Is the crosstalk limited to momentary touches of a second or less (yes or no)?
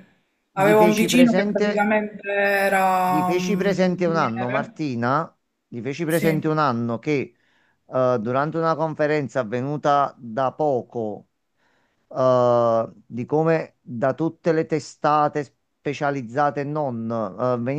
no